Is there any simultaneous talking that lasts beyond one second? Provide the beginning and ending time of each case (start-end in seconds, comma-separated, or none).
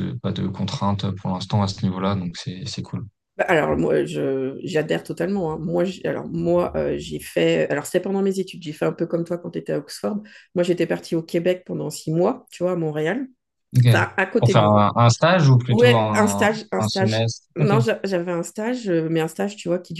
15.7-17.7